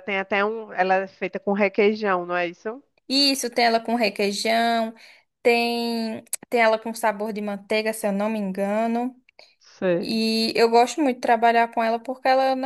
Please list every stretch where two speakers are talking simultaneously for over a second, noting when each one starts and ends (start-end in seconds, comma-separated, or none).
none